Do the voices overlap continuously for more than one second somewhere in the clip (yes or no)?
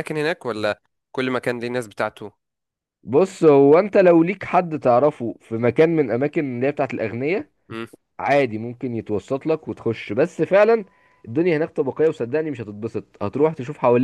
no